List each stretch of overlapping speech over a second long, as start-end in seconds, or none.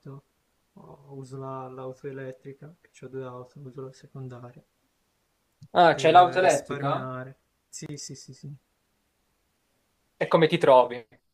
5.9-7.1